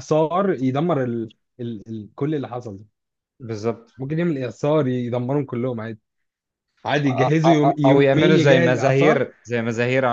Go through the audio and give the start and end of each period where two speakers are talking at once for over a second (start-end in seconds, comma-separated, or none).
7.0-9.2